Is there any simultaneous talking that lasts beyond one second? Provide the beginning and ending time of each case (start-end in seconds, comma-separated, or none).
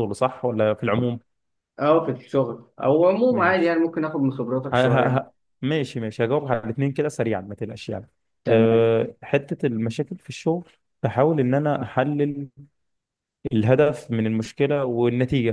none